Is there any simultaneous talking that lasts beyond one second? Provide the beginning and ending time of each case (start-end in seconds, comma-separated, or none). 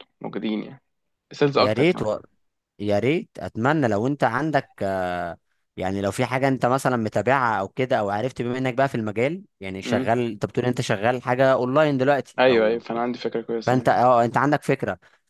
none